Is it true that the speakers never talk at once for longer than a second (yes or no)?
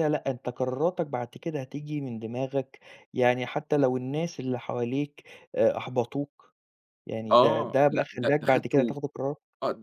no